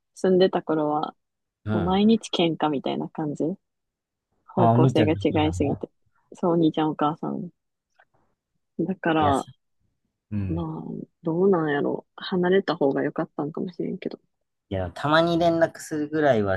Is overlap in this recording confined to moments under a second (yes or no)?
no